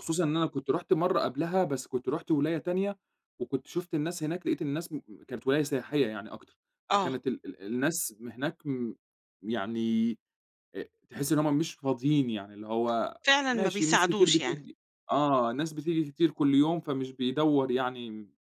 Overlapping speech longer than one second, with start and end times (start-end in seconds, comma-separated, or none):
13.2-14.6